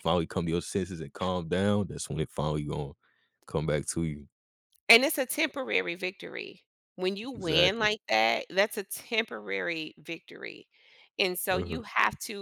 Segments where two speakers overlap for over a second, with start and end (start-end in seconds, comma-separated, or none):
none